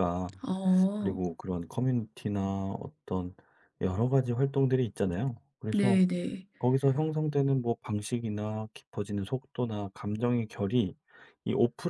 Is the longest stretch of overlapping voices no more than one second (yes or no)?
yes